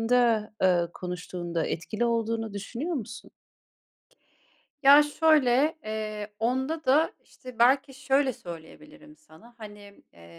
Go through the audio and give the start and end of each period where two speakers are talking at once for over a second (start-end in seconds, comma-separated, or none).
none